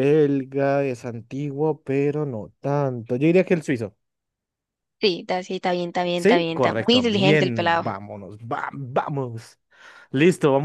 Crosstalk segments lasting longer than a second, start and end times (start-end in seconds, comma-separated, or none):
6.2-7.8